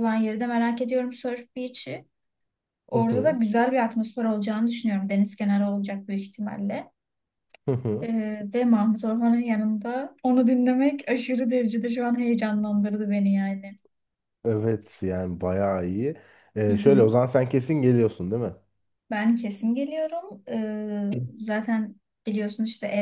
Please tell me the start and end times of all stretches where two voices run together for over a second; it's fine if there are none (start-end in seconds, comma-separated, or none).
none